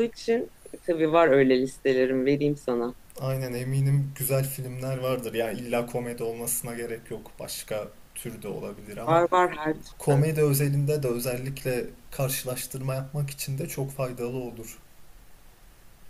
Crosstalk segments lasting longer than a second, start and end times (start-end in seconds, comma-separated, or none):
none